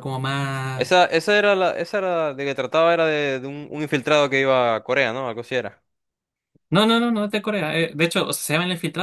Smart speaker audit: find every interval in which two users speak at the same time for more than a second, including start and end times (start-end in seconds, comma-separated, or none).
none